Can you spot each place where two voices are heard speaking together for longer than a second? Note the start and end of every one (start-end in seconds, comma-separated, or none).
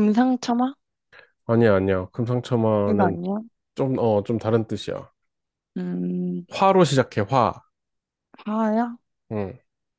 none